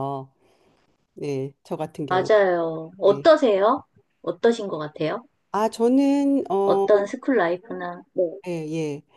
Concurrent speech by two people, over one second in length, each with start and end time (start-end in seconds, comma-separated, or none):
none